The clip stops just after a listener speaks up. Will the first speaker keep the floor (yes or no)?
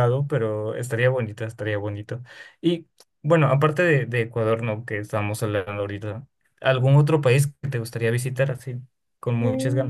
no